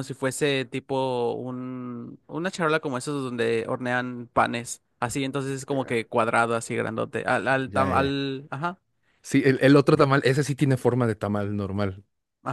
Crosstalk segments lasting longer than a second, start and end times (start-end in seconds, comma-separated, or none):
none